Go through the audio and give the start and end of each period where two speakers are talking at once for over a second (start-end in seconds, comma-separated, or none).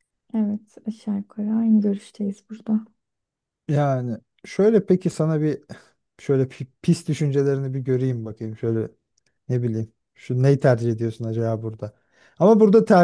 none